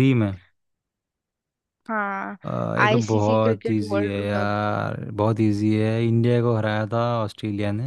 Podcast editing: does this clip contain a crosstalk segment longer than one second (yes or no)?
yes